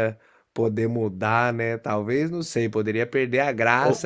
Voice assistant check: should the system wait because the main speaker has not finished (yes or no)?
yes